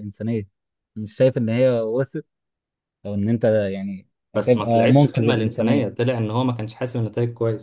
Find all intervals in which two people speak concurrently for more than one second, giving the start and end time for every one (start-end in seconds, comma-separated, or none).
4.3-5.8